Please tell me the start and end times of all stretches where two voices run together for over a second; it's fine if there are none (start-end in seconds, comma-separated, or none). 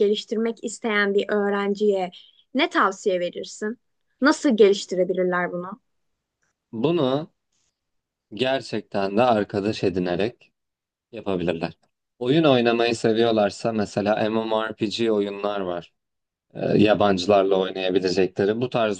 none